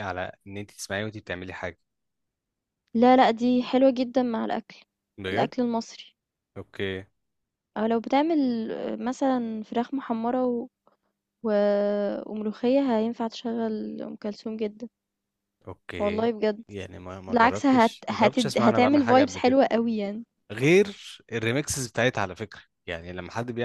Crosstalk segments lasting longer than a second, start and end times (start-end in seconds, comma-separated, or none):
17.3-19.6